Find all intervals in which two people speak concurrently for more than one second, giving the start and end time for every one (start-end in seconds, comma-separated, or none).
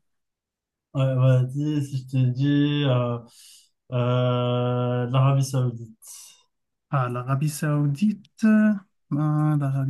none